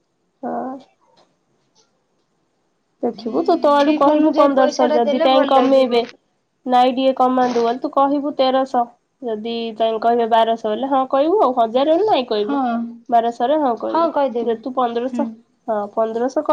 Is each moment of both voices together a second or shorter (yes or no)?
no